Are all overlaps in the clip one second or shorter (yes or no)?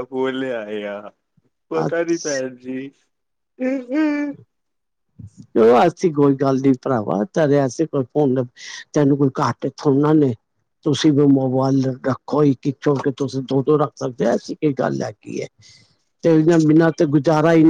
yes